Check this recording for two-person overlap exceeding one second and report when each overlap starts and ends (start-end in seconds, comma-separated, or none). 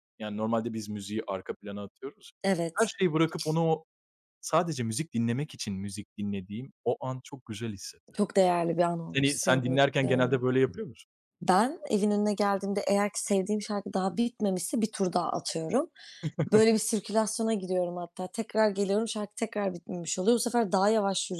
9.1-10.4